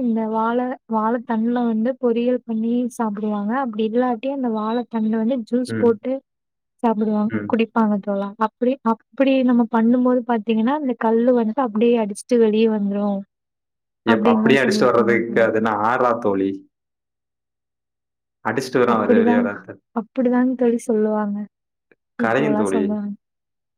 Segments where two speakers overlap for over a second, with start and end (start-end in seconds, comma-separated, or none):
14.1-15.5